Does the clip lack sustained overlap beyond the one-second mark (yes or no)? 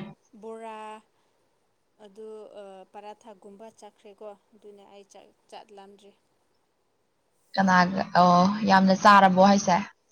yes